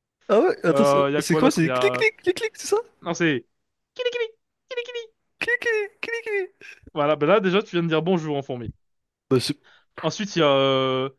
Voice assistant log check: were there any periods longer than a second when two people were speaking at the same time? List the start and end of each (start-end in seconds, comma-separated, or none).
0.7-2.0